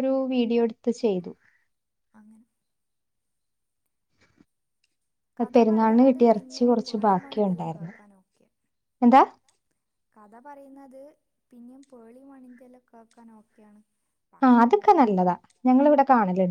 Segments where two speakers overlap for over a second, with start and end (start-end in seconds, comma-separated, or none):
5.5-7.9